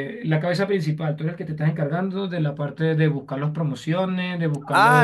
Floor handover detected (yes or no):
yes